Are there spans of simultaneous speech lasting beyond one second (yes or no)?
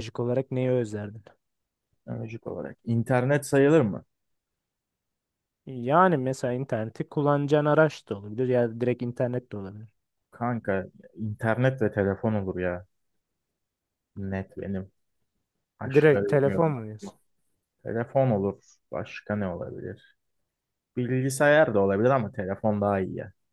yes